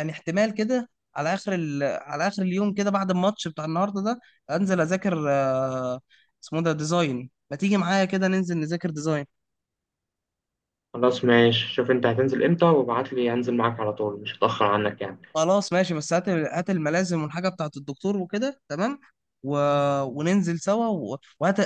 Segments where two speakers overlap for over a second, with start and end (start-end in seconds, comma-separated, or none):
none